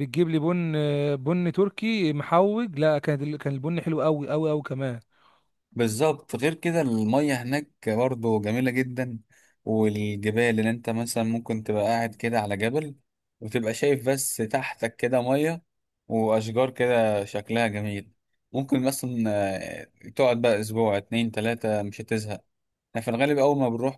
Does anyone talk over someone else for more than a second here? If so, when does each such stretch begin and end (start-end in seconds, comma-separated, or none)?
none